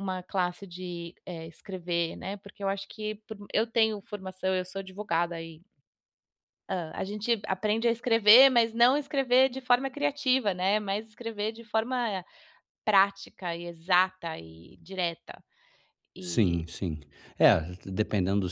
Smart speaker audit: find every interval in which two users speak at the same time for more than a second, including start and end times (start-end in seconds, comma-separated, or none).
none